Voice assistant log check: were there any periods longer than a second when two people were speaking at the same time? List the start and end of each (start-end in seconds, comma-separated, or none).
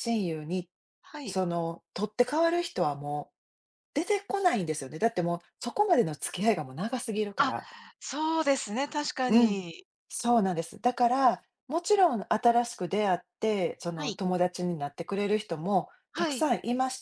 none